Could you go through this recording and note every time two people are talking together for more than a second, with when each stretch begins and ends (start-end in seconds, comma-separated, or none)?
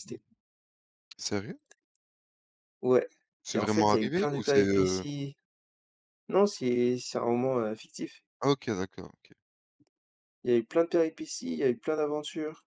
3.5-5.0